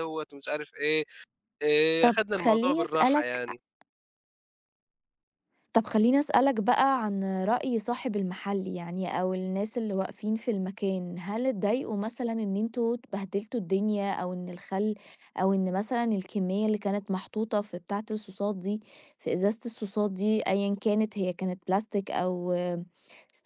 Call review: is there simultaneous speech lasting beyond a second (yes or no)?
yes